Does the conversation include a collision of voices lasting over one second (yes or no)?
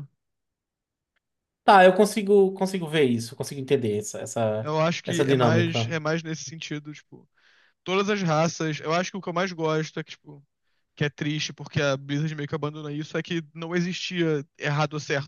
yes